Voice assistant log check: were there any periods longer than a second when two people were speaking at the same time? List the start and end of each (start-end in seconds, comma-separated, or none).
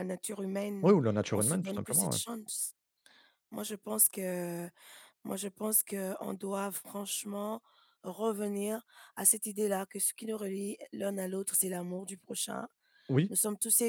0.8-2.2